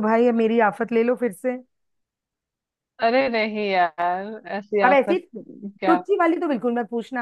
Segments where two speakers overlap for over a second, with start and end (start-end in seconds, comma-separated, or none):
none